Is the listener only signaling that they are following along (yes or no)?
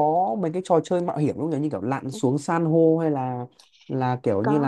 yes